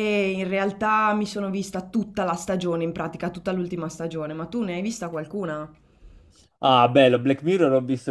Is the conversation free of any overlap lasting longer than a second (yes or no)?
yes